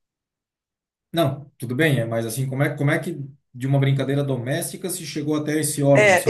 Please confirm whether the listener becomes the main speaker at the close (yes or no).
yes